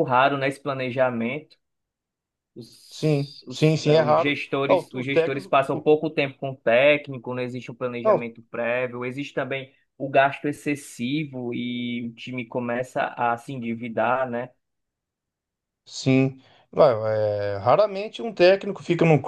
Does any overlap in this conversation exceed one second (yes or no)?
yes